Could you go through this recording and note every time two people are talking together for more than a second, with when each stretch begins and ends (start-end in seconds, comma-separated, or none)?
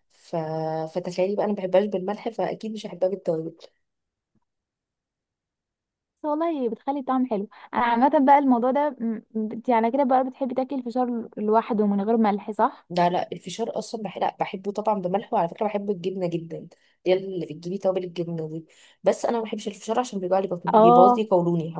none